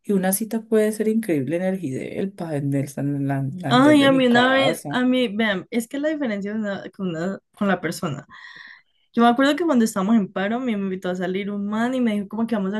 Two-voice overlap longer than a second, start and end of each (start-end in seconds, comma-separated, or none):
3.7-5.0